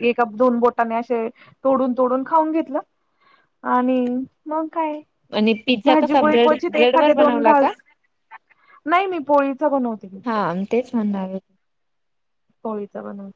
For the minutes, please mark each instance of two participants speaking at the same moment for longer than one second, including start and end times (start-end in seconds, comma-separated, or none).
5.8-7.7